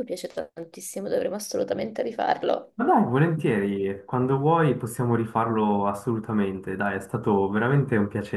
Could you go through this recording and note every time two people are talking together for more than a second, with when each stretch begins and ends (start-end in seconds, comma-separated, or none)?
none